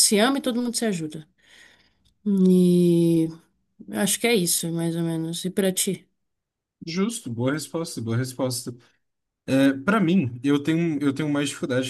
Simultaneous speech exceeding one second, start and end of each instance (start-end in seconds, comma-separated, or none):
none